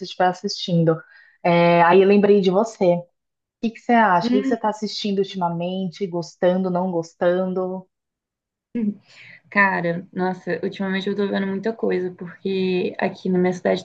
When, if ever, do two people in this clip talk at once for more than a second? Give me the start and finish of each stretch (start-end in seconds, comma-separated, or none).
none